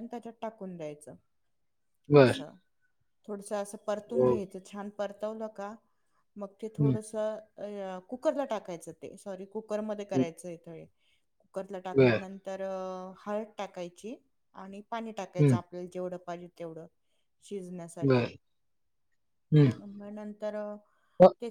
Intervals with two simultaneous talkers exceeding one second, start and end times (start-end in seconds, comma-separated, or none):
none